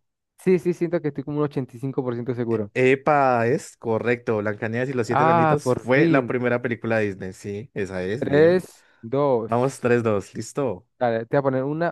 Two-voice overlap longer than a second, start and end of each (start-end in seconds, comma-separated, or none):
5.1-6.3